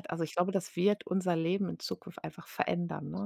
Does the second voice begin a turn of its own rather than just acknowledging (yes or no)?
no